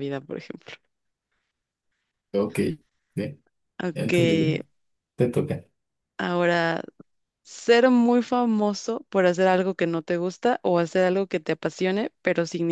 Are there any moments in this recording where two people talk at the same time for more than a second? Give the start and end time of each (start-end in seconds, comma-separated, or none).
none